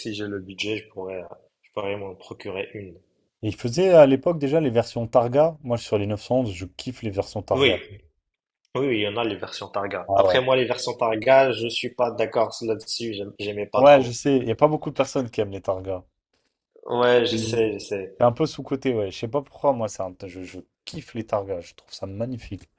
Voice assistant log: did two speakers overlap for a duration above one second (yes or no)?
no